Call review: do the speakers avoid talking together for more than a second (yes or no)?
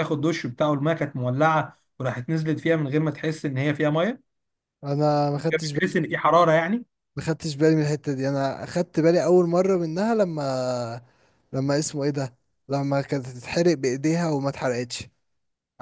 yes